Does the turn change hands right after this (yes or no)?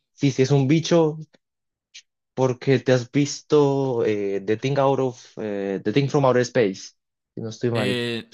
yes